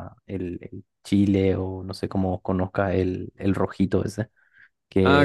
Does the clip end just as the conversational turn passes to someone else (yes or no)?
yes